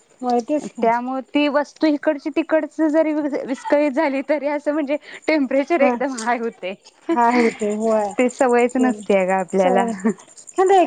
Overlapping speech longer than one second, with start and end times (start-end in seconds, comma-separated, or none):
none